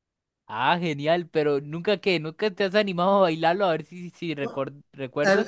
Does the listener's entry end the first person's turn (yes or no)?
yes